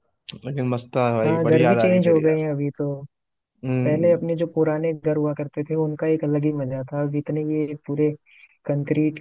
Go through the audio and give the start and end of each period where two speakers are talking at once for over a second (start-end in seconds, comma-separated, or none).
1.2-2.4